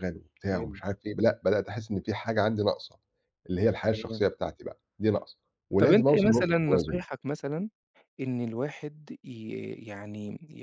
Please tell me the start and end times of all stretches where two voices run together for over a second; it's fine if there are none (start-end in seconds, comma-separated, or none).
5.8-7.0